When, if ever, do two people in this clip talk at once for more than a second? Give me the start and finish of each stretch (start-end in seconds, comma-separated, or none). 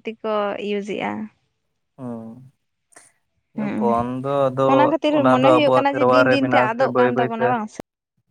5.2-7.5